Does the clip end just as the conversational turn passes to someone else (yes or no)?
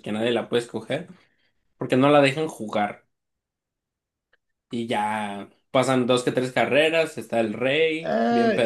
yes